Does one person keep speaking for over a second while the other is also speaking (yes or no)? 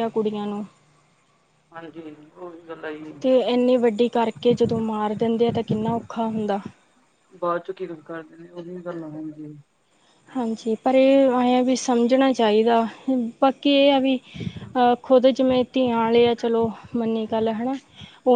no